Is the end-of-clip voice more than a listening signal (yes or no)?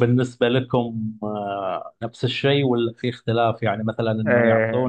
no